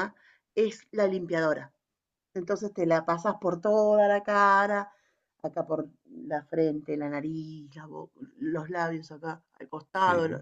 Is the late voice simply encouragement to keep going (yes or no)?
no